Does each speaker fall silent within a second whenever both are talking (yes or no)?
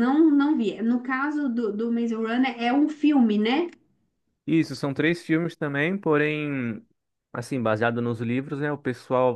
yes